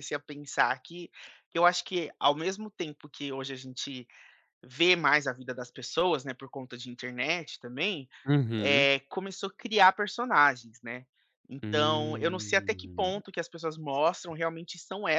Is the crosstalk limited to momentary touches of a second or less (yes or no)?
no